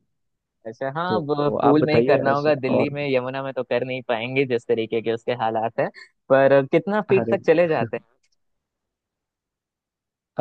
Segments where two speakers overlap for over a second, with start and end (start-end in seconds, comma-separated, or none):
1.1-2.9